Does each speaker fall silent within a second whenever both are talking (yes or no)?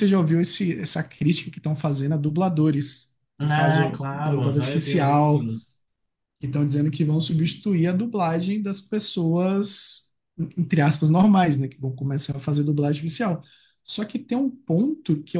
no